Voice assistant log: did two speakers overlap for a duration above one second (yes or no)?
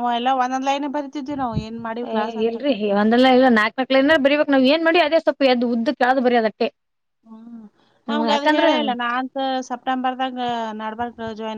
no